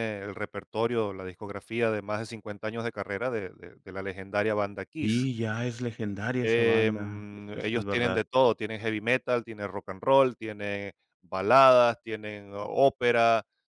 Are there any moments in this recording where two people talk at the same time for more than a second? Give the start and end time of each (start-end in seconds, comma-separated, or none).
6.4-8.2